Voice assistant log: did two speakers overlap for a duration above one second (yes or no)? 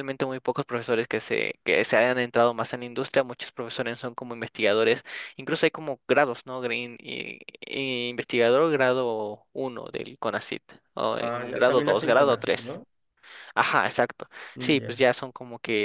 yes